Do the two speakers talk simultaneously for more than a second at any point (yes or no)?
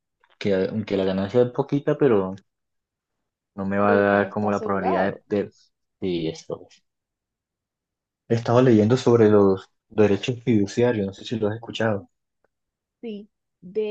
yes